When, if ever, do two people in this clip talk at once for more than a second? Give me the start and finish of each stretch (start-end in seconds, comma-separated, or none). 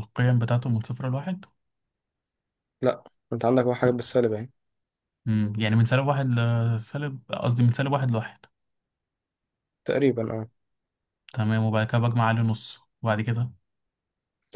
none